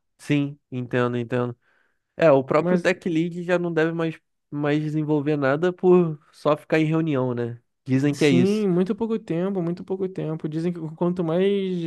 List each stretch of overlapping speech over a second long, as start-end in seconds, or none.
none